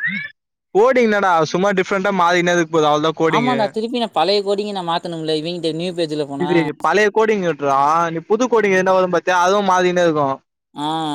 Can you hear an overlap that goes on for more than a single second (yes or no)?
no